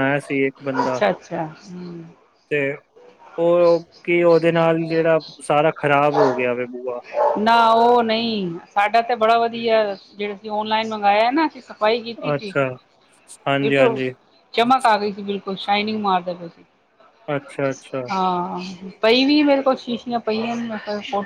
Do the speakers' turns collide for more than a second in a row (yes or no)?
no